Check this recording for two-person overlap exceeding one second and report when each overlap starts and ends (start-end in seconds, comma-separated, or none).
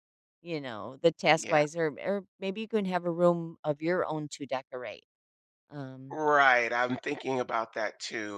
none